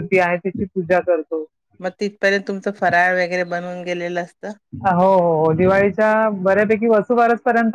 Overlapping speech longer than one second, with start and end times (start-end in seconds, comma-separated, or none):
none